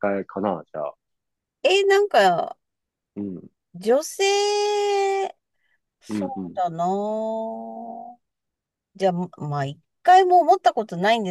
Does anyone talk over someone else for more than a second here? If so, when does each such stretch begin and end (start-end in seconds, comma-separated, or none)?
none